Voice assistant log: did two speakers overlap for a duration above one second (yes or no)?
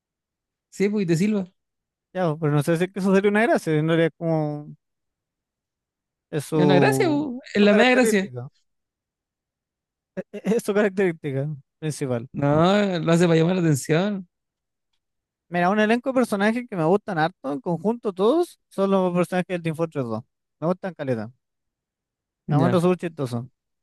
yes